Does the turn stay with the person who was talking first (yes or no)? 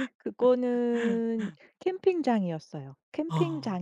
yes